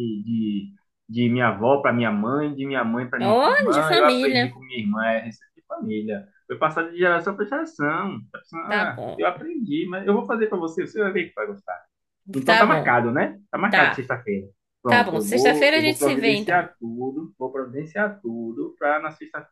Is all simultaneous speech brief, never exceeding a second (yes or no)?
no